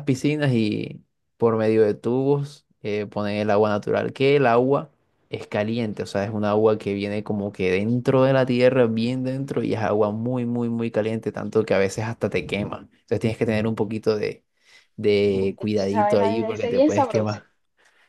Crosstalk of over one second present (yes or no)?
yes